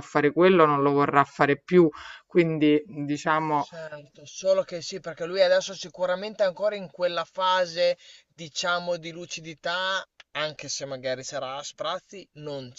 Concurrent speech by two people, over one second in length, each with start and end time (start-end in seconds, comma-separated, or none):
none